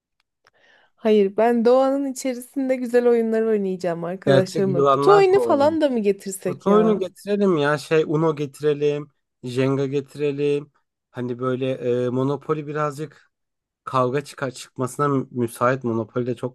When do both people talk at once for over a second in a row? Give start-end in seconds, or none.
4.2-5.8